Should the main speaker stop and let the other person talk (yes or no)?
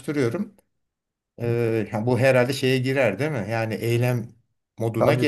yes